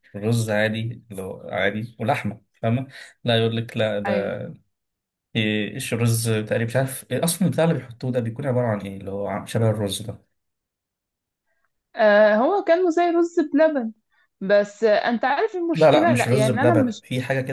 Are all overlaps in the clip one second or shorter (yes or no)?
no